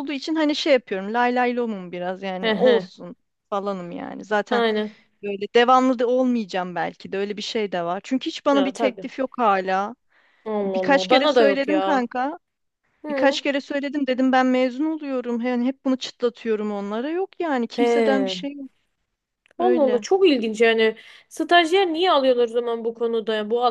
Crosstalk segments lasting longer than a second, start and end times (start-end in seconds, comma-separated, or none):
10.6-12.1